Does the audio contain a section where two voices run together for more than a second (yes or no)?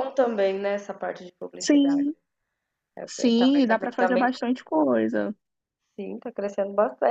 yes